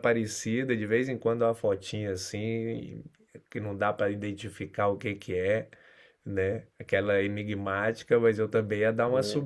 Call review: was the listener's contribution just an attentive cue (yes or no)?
yes